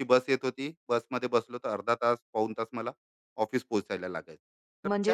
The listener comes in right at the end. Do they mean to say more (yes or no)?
yes